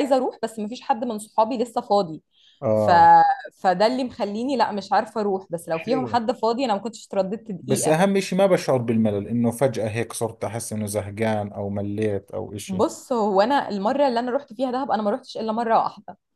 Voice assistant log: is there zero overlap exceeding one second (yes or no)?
yes